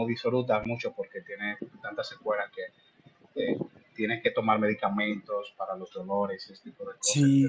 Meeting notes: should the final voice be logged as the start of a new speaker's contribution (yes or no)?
yes